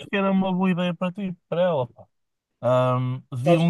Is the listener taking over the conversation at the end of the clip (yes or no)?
no